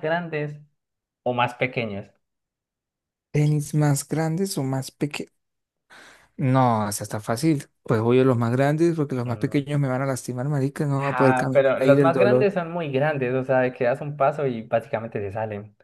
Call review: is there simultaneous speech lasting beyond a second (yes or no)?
yes